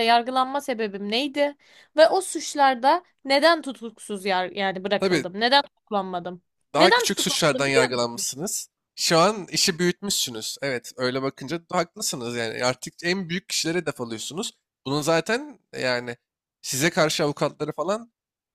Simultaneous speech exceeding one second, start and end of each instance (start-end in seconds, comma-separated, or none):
6.8-8.2